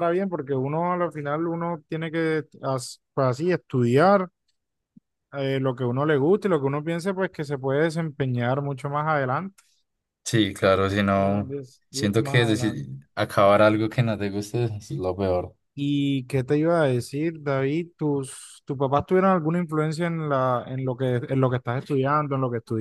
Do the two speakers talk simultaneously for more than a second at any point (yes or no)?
yes